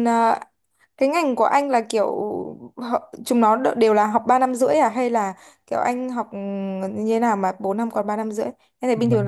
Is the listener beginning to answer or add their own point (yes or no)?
yes